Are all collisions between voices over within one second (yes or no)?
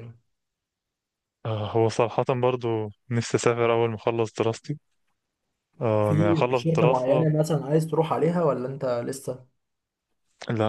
no